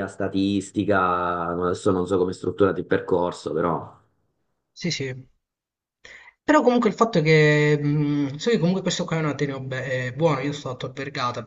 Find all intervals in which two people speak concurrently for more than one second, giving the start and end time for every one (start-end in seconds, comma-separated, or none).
none